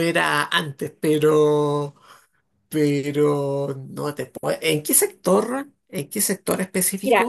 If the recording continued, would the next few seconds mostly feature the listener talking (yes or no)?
yes